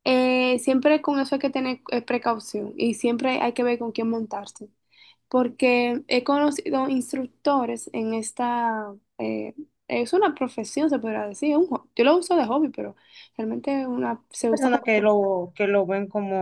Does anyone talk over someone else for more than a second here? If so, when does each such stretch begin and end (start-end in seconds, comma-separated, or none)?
none